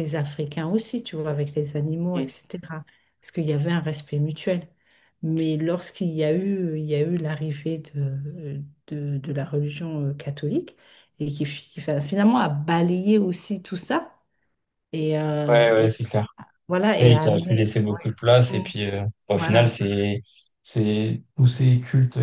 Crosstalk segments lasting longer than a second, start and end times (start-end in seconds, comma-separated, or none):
17.0-18.6